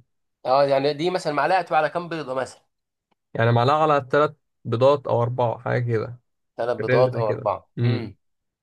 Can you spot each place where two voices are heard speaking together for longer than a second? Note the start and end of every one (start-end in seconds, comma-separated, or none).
6.8-8.1